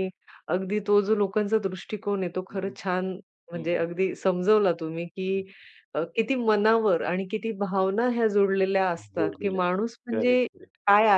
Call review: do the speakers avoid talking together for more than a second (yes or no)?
no